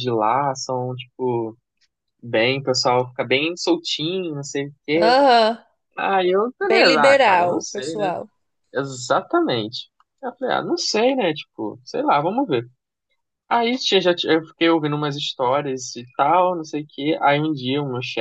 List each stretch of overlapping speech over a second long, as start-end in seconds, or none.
6.6-8.1